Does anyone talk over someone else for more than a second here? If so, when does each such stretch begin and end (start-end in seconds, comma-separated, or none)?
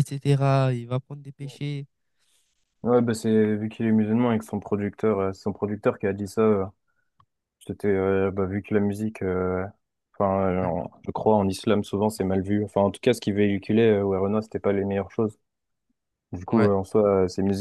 none